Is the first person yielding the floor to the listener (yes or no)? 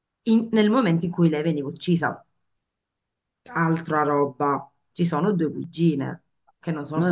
yes